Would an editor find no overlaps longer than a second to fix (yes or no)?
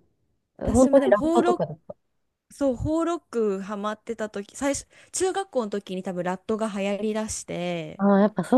no